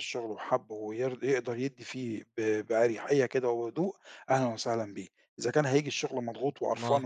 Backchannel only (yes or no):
yes